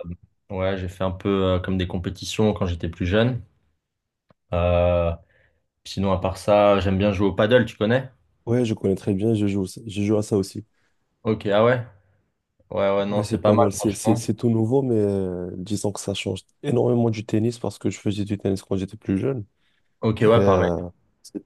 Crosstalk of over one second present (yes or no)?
yes